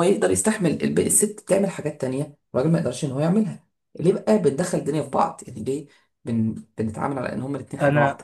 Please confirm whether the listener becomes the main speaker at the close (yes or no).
yes